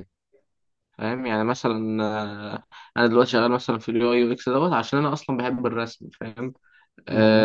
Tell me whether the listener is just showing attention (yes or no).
yes